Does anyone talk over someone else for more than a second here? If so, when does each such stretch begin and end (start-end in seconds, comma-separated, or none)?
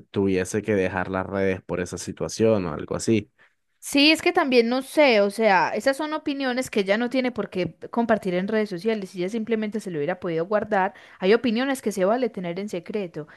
none